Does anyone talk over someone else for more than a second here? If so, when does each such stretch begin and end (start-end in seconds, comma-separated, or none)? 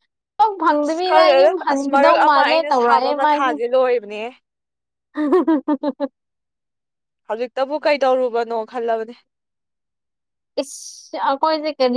0.7-2.5